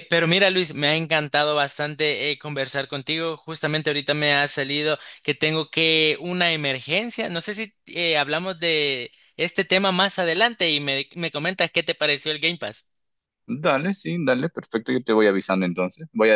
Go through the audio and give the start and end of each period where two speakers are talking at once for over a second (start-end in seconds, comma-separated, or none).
none